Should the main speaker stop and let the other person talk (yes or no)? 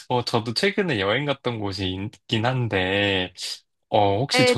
yes